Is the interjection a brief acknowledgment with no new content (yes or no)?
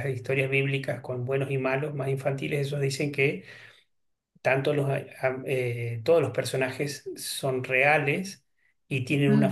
yes